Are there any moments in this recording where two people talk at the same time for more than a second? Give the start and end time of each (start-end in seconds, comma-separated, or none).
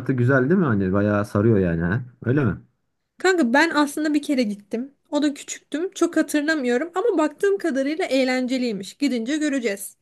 none